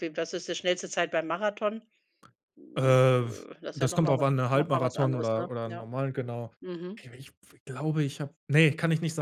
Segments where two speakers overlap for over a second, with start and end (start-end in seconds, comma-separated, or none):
3.6-5.8